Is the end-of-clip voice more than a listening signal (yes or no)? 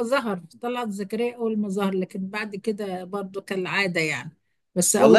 yes